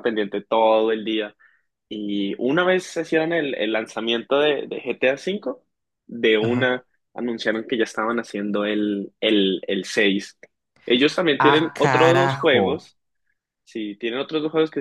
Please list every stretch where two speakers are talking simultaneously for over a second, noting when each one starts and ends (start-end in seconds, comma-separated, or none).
11.4-12.9